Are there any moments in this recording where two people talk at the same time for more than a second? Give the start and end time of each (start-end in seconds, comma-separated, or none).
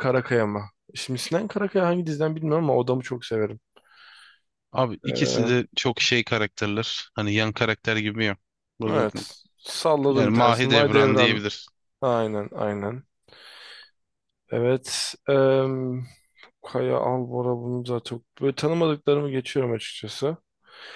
10.1-11.4